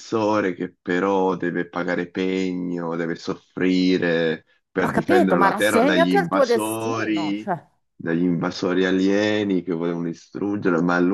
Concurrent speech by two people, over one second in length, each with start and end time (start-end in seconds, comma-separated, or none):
4.8-7.5